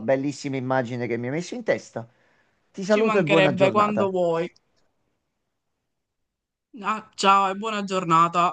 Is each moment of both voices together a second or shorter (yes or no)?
no